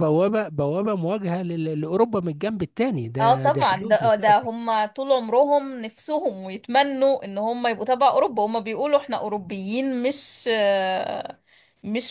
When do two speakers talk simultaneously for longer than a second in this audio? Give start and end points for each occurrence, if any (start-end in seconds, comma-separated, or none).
3.2-4.5